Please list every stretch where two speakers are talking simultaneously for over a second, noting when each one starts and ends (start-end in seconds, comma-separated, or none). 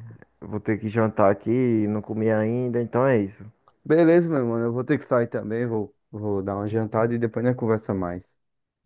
none